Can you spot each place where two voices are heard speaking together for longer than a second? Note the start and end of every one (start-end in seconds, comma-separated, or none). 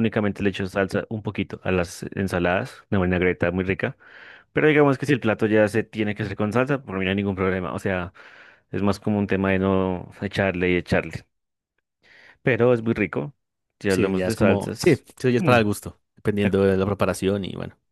13.9-15.6